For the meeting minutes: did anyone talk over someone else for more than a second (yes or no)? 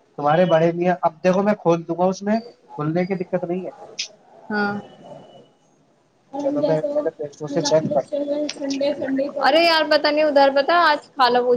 yes